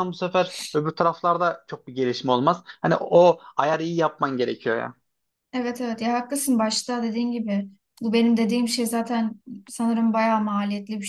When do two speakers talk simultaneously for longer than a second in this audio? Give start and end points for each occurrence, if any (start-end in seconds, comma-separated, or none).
none